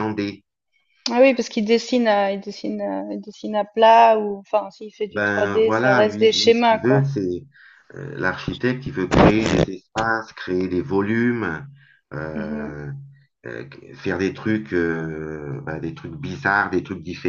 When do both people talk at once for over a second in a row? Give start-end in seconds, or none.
5.1-7.0